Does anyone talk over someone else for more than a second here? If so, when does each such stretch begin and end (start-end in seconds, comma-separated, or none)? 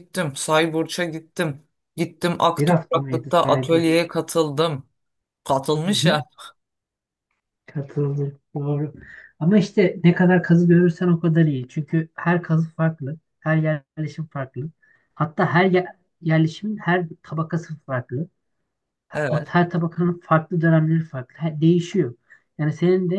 2.6-4.0